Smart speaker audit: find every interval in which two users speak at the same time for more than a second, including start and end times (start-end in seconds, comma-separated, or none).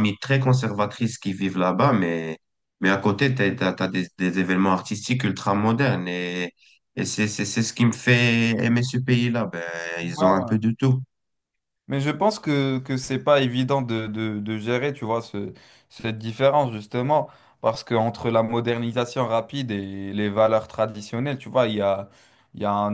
none